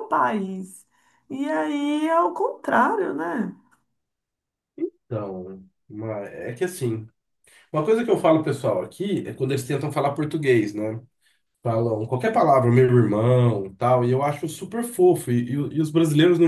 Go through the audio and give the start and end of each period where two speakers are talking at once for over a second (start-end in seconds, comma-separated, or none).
none